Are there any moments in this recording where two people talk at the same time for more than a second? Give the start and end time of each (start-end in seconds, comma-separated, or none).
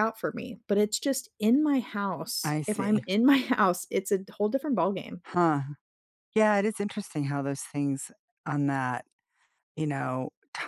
none